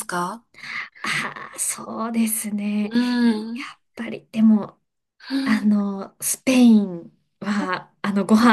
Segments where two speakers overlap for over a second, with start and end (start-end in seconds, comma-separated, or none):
none